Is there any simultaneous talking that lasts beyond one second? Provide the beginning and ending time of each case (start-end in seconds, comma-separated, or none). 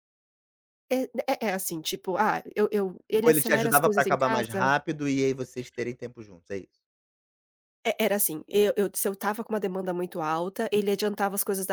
3.2-4.6